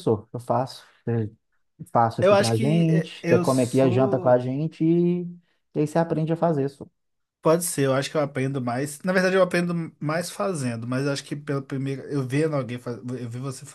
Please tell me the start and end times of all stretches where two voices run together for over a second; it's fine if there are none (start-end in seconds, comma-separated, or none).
2.2-4.5